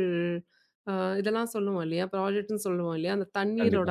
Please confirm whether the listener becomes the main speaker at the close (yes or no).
no